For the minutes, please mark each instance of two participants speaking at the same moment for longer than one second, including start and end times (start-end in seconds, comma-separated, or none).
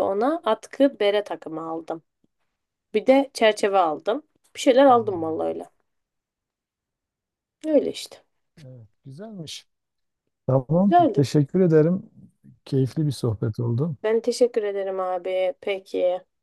none